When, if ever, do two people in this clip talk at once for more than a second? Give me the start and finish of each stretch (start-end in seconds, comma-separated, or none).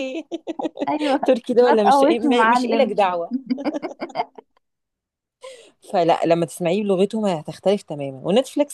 1.6-2.9